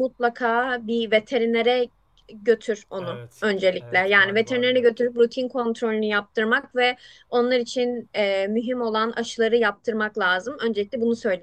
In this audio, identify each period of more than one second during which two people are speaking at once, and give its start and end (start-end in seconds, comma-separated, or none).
3.0-5.1